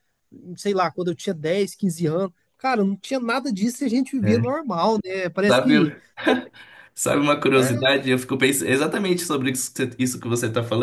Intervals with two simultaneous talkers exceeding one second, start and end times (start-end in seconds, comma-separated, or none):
none